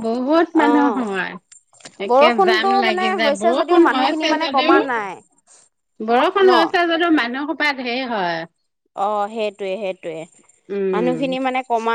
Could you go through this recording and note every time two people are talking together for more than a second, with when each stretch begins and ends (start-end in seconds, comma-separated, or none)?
2.1-4.8